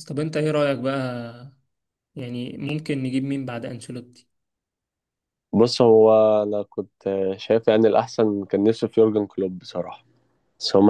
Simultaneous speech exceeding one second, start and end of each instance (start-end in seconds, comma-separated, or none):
none